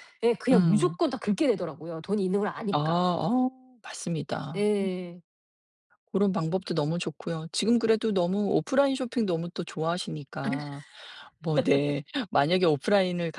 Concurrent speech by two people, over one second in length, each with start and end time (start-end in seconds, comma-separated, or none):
none